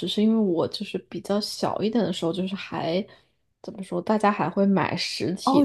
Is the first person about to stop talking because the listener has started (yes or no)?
yes